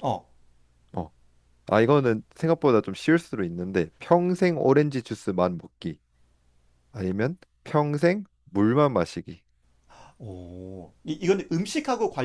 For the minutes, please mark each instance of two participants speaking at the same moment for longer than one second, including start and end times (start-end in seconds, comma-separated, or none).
none